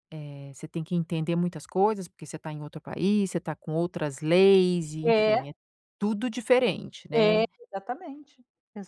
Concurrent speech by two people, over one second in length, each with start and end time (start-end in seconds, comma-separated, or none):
none